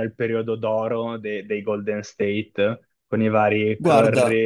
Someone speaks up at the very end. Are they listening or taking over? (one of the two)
listening